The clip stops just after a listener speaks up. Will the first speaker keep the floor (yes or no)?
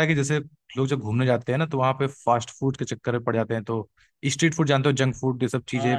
no